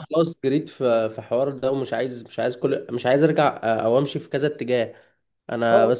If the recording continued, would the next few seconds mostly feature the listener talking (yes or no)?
no